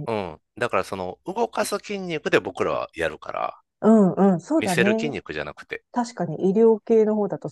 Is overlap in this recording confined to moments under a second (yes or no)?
yes